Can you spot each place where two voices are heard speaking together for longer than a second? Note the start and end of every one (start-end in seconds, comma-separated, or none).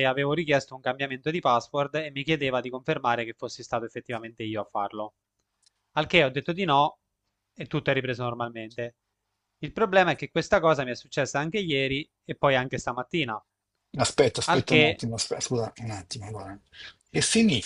none